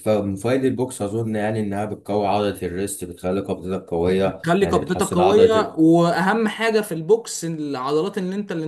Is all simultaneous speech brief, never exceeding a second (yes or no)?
no